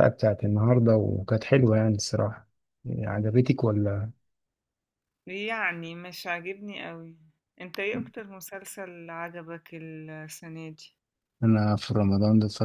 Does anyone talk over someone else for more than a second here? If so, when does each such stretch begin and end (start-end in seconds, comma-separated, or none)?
none